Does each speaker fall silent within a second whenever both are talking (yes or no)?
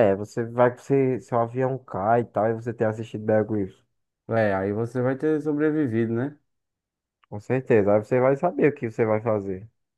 yes